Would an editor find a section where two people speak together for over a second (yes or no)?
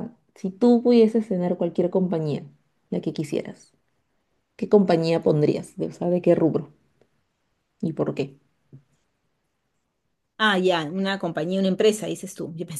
no